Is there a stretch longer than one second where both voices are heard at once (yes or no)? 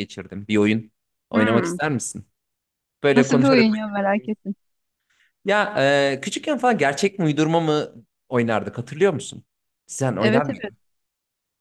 yes